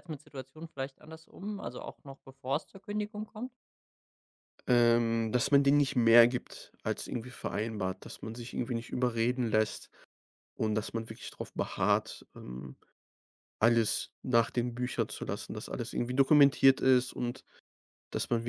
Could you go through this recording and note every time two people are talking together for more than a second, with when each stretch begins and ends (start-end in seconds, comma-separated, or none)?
none